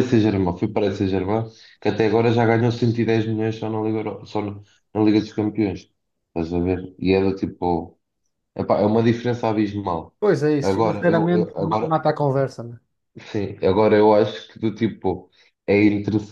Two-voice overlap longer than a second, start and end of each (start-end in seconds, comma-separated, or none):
10.6-11.9